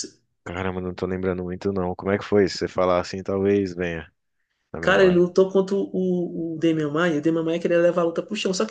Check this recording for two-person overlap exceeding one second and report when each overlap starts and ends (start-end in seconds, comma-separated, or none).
none